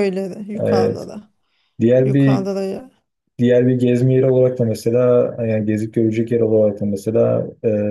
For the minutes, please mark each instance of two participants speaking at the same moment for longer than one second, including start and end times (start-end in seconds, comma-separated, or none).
none